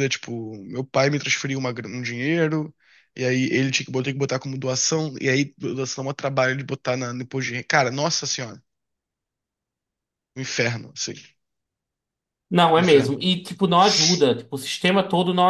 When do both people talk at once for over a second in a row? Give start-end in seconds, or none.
none